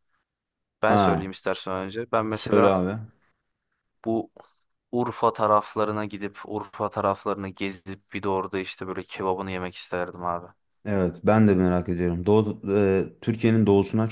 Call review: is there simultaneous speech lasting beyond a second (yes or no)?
no